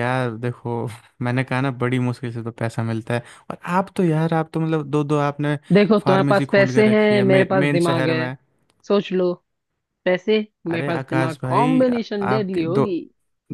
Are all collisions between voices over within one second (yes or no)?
no